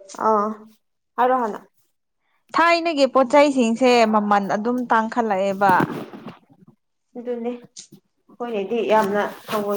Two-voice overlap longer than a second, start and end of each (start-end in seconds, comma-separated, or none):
none